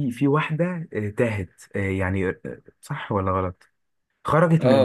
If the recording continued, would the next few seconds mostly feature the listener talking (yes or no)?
yes